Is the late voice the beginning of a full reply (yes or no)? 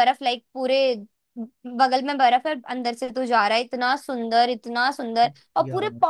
no